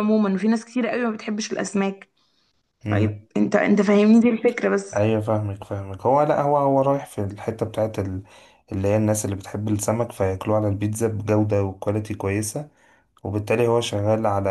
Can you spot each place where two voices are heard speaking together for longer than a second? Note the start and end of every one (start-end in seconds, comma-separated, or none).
none